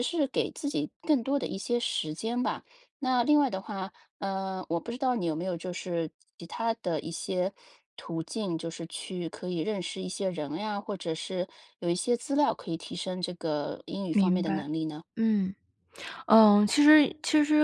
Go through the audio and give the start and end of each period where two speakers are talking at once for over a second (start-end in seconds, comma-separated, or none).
none